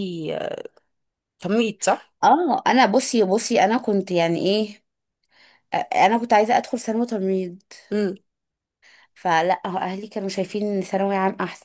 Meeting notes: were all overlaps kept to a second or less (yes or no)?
yes